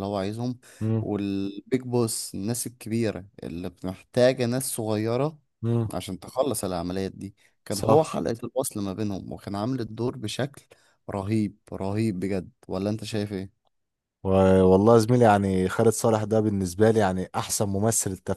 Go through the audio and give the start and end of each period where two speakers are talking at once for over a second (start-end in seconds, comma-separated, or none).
none